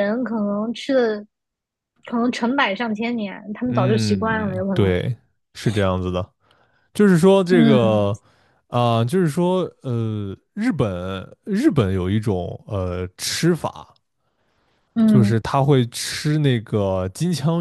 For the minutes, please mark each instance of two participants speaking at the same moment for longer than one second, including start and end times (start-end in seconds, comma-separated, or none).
3.7-5.0